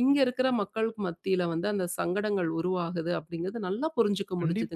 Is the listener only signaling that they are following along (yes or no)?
no